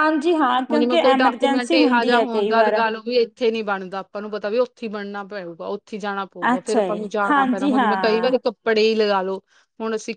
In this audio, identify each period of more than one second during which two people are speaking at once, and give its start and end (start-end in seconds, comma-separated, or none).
0.7-2.8, 6.5-8.3